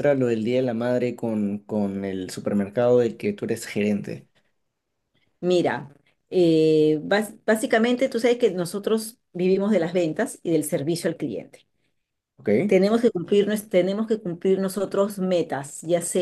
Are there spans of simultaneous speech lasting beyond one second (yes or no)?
no